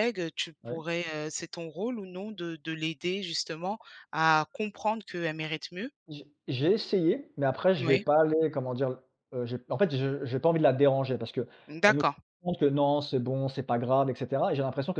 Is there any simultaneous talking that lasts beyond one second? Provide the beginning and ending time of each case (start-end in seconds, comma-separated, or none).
none